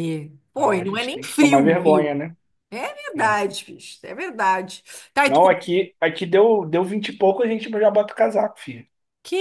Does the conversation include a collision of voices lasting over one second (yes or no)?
yes